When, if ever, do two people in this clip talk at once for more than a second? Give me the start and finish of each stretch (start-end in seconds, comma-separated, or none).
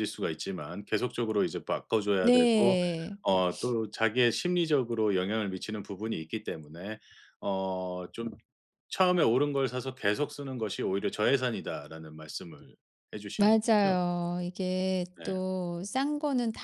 none